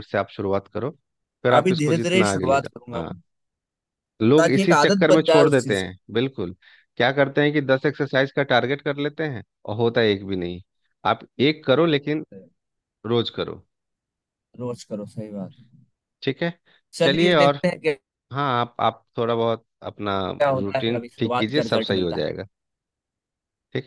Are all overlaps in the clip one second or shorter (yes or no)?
no